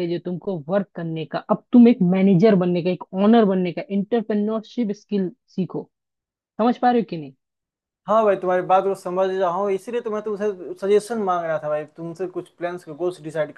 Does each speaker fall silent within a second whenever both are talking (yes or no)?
yes